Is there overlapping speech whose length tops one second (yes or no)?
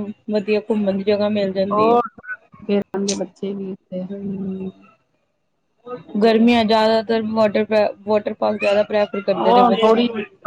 no